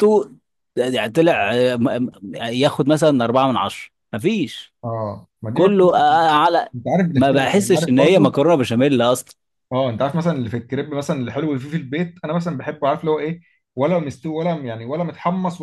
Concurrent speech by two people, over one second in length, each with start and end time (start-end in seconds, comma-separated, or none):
7.1-8.3